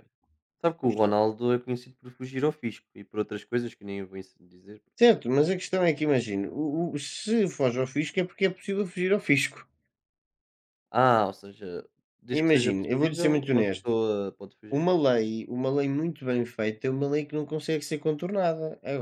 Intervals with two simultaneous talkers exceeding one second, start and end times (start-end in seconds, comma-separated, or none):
12.3-13.9